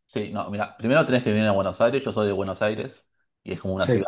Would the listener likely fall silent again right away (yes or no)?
yes